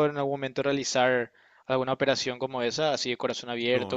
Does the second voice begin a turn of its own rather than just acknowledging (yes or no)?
yes